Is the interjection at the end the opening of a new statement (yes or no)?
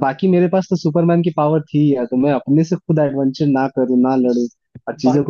yes